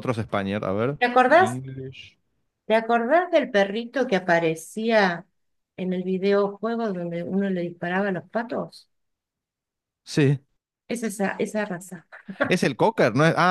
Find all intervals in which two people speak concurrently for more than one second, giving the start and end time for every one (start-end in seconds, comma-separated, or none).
none